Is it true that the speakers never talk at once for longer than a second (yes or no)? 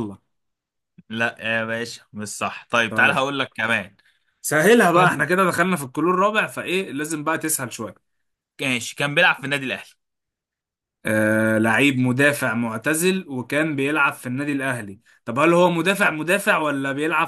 yes